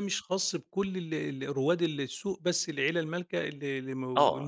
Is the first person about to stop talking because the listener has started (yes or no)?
yes